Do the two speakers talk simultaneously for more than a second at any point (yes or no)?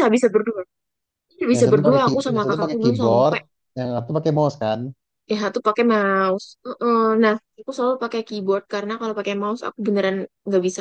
yes